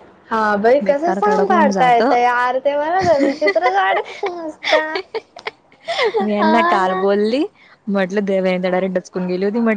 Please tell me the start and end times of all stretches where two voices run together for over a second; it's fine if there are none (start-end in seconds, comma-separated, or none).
0.8-2.1